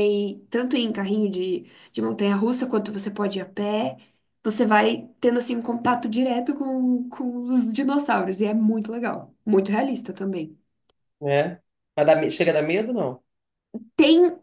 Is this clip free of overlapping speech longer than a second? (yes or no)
yes